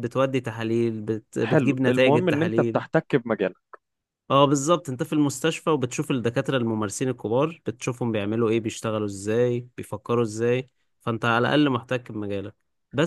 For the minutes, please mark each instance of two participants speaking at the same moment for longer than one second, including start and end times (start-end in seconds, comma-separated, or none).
1.4-2.9